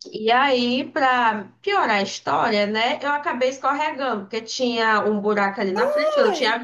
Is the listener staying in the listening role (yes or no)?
yes